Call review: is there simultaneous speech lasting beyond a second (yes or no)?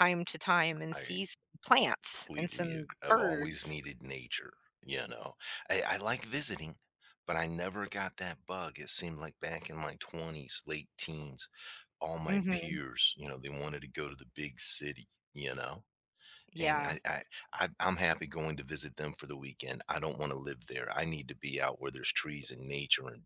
yes